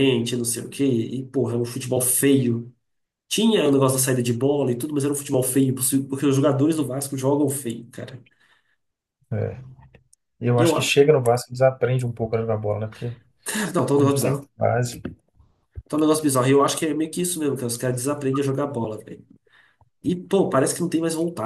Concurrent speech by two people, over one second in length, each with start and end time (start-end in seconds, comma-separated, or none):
none